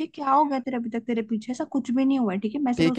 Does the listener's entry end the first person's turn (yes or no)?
yes